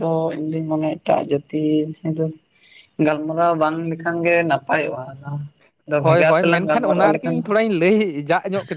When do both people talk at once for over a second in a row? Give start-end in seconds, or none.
6.0-7.4